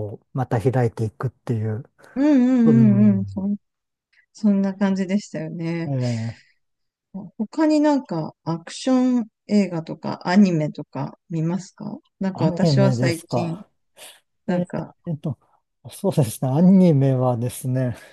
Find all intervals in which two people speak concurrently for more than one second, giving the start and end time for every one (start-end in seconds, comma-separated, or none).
12.3-13.6